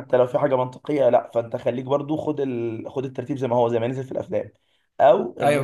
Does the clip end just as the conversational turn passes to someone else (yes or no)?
no